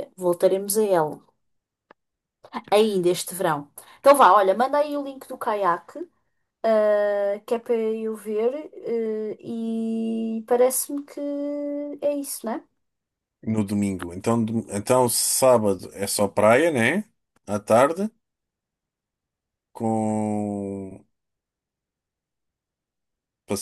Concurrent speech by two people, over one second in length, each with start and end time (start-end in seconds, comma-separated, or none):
none